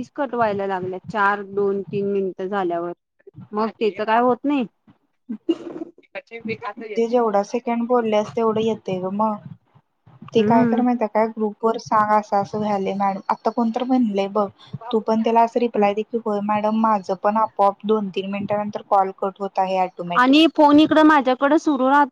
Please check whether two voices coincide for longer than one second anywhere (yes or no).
no